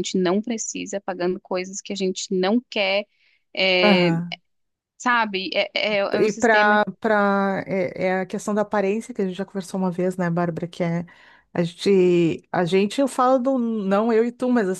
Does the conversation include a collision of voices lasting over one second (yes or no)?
no